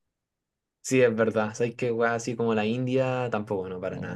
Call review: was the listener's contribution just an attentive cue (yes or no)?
no